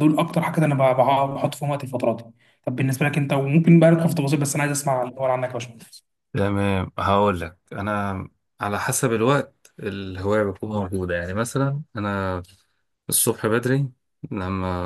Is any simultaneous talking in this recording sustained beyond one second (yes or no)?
no